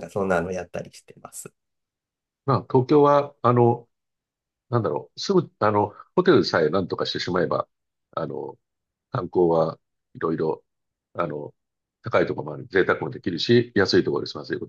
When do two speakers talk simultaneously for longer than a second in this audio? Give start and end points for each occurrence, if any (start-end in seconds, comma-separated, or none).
none